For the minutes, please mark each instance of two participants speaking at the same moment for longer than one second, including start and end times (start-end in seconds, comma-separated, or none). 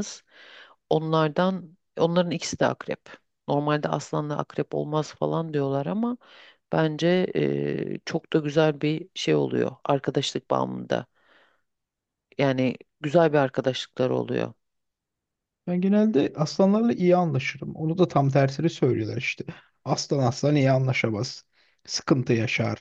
none